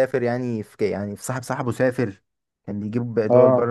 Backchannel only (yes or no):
yes